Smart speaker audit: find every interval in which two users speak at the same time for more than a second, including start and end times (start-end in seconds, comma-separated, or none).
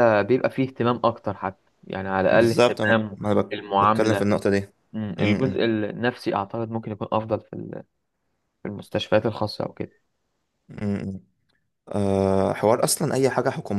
2.3-4.3